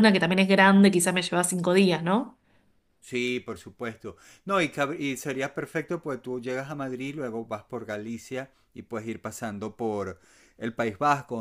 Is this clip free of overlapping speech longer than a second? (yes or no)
yes